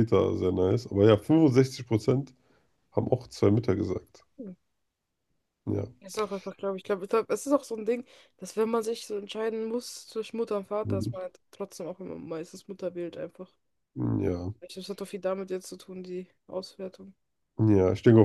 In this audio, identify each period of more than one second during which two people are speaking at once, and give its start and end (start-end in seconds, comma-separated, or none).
none